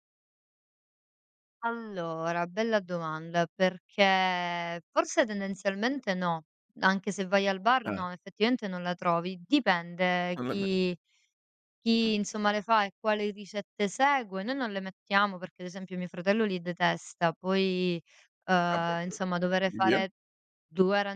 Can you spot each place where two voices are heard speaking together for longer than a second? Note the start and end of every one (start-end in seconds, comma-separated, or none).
18.7-20.0